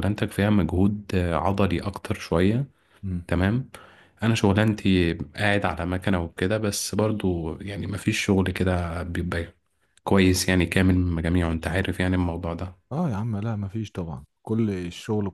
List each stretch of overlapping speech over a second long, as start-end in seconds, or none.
none